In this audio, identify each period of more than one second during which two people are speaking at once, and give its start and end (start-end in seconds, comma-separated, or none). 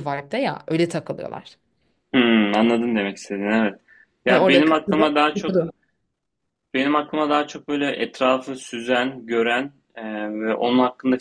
4.3-5.7